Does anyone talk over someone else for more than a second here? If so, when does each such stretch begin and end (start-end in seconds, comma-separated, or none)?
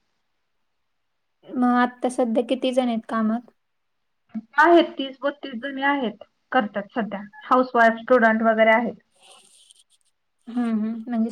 none